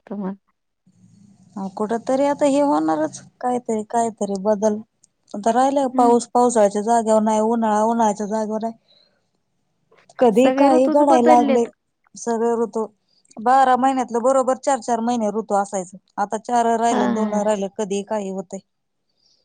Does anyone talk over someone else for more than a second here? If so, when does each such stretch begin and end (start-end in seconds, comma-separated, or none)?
10.4-11.7